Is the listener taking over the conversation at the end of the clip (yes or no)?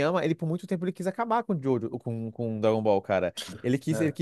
no